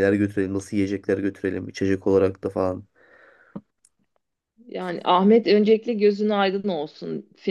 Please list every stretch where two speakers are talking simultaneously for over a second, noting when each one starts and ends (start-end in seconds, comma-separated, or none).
none